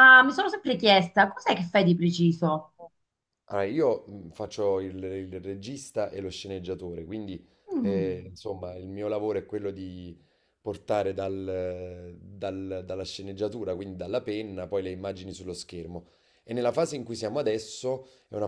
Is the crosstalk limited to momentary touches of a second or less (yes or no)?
yes